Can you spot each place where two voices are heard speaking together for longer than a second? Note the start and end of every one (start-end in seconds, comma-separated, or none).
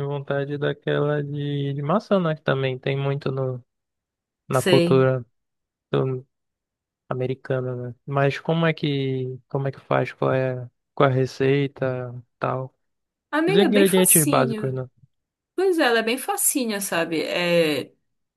13.5-14.8